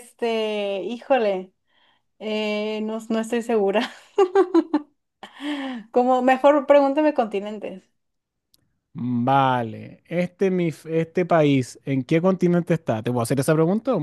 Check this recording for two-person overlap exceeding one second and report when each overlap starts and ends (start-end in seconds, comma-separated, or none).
none